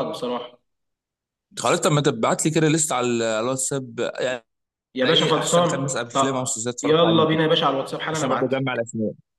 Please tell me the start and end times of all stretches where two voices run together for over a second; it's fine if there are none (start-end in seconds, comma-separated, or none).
5.0-7.4